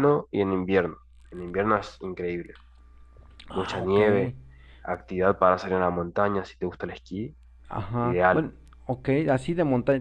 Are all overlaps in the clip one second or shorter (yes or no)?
yes